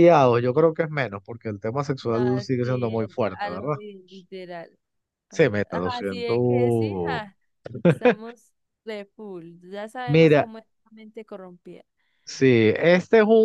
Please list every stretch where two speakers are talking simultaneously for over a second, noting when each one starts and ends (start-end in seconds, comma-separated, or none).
2.0-3.8, 5.7-7.2